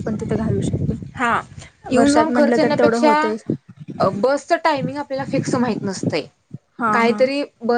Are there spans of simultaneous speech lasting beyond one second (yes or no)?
yes